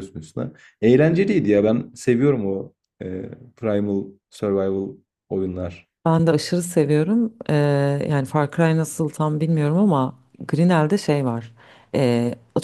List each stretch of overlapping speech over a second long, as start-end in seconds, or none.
none